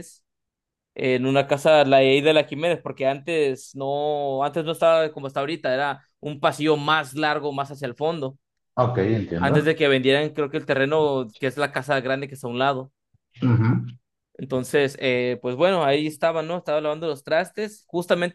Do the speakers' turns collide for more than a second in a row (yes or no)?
no